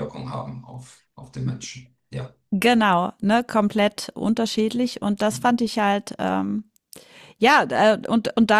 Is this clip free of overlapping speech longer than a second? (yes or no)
yes